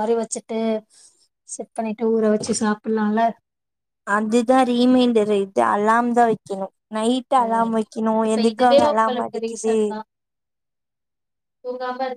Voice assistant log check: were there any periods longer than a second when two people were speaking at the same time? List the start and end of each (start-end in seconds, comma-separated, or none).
8.3-9.8